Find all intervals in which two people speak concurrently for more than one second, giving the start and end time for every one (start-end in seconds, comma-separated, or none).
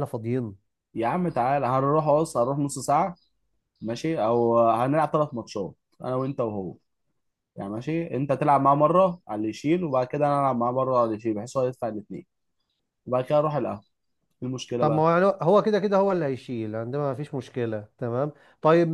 none